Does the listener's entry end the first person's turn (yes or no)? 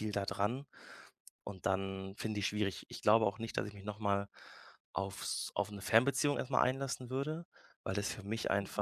no